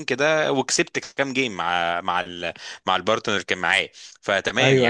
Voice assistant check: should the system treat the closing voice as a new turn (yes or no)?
no